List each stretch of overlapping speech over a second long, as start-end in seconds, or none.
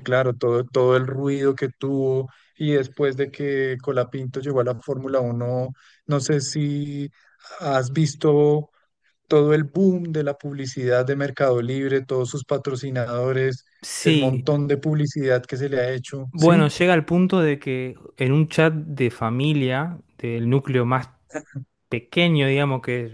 none